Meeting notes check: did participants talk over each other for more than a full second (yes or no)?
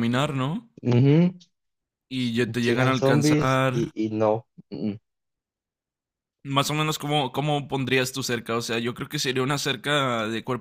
yes